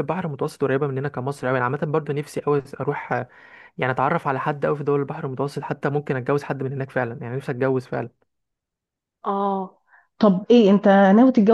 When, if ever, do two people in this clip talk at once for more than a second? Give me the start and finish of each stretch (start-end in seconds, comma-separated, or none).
none